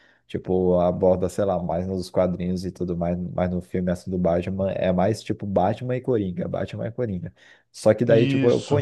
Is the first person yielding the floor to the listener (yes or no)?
no